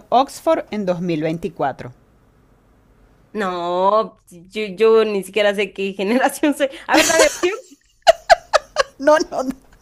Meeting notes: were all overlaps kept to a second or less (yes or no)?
yes